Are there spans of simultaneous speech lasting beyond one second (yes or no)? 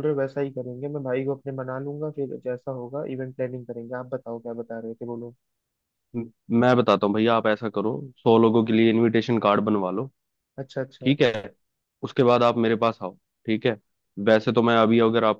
no